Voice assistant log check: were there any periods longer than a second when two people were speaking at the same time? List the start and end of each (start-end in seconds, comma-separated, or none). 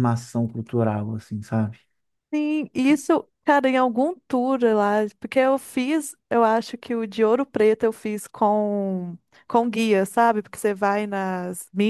none